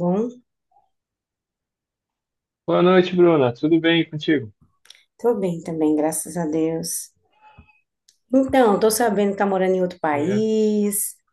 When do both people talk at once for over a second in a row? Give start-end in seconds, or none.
none